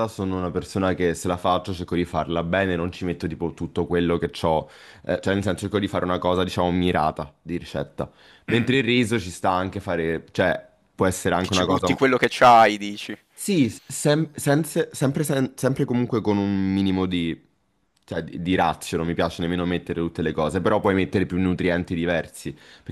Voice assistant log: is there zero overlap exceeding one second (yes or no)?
yes